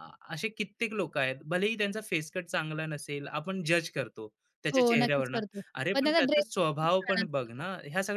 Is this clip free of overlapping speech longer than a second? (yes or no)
no